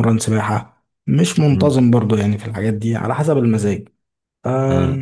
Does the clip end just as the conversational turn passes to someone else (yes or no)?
no